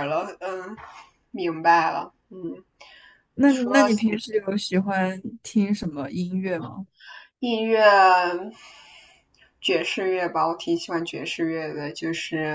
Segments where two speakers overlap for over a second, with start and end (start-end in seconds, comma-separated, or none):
none